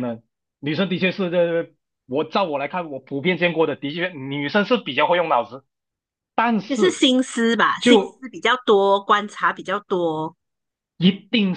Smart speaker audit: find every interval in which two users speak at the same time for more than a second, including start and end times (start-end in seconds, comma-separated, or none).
none